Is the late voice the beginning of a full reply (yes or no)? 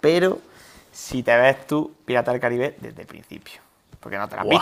yes